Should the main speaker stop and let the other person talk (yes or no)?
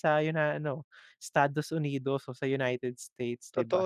yes